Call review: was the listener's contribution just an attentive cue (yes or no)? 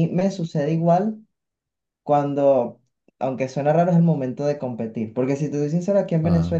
yes